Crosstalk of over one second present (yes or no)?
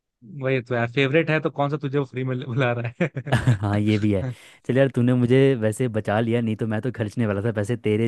no